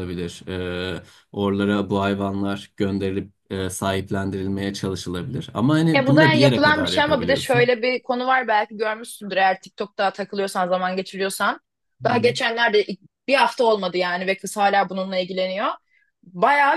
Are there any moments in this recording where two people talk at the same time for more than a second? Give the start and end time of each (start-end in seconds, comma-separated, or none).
6.0-7.7